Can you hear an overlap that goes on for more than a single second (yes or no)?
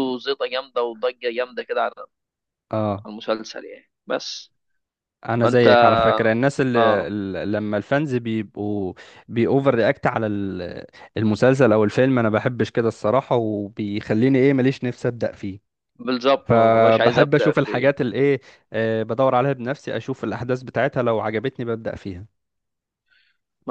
yes